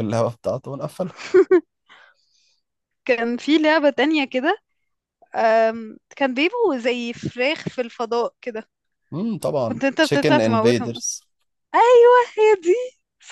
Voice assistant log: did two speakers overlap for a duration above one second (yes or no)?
yes